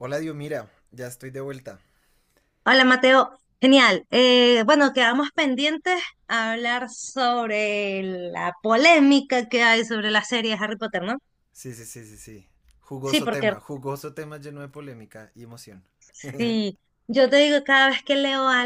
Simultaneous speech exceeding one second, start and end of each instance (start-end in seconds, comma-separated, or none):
none